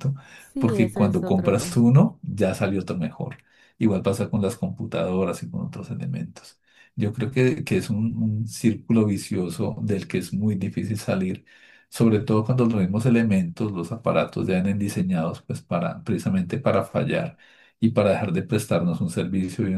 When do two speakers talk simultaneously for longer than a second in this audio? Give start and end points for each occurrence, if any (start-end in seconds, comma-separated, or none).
0.6-2.0